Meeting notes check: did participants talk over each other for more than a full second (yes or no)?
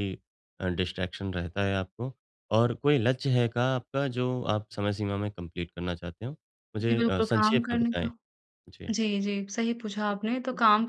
yes